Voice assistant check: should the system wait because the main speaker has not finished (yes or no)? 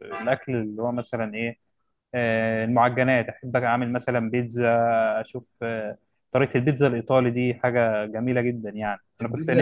no